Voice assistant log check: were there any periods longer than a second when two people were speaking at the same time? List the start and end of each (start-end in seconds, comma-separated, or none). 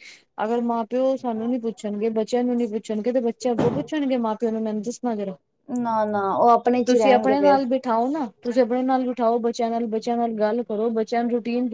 none